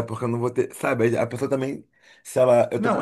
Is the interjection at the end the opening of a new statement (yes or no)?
no